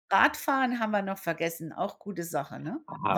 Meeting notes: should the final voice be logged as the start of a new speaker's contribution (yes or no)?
yes